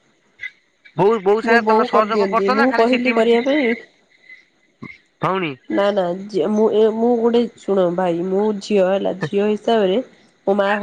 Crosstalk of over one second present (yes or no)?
yes